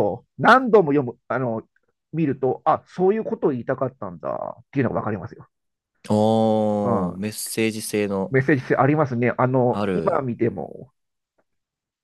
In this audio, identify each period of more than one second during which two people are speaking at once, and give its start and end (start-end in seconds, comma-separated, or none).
none